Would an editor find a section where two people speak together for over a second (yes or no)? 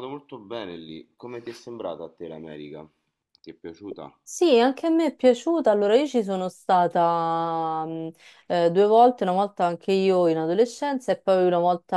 no